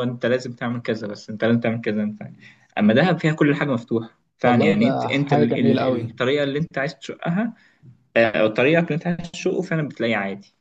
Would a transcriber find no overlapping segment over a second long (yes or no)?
no